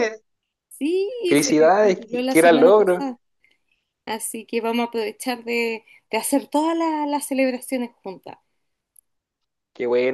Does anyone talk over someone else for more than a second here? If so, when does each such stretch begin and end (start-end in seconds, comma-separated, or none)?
1.3-3.0